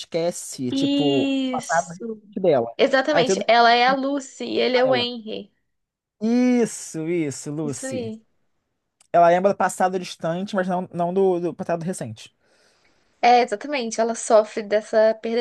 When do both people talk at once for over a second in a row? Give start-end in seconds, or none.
0.7-2.2